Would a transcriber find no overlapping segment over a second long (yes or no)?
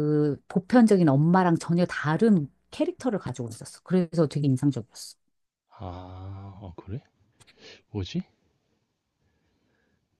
yes